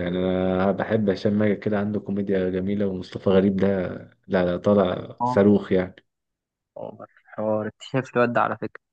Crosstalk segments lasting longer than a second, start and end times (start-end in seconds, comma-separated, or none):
none